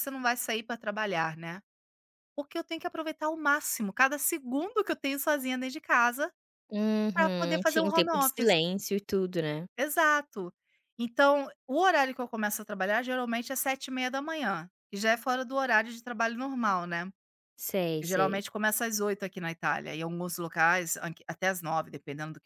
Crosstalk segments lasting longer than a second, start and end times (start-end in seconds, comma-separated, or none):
7.1-8.6